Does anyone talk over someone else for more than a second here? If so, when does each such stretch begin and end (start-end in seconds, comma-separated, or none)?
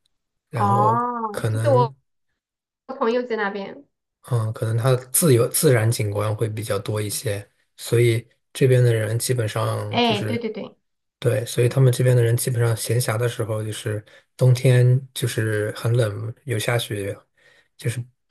0.5-1.9